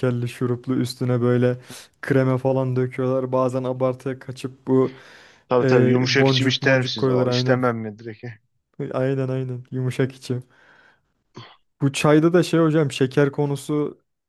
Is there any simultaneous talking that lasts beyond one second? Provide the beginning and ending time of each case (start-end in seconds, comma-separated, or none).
5.6-7.6